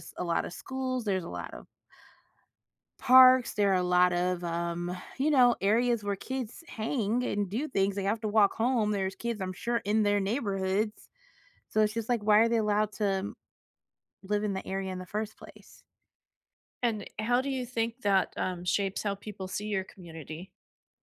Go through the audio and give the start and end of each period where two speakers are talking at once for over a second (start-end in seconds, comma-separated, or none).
none